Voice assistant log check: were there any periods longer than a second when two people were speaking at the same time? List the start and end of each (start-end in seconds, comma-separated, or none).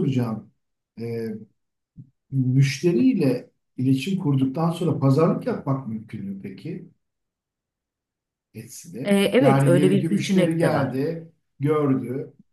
9.0-11.0